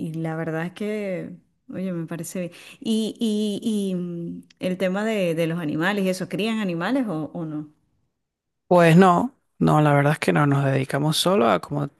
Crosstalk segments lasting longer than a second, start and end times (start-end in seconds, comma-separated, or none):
none